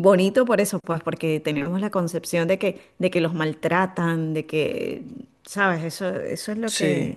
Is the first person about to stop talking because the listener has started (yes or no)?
no